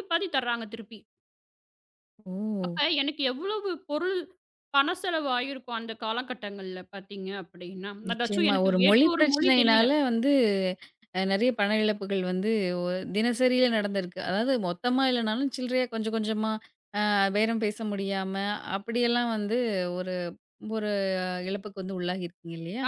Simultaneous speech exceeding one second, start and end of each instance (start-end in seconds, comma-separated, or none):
8.1-9.8